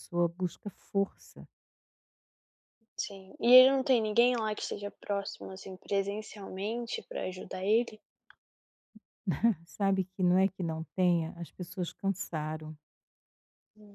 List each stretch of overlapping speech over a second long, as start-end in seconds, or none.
none